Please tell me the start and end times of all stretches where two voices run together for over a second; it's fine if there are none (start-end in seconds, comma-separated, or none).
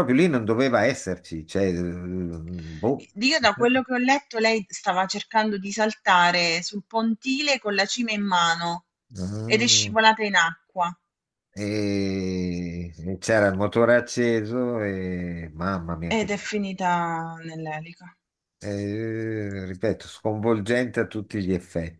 none